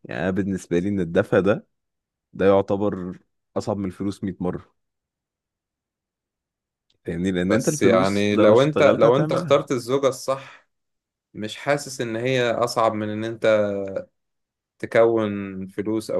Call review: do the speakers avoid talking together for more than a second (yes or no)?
no